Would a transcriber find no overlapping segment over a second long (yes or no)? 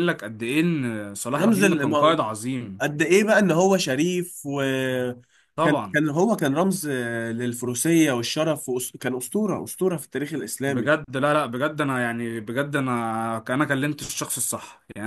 yes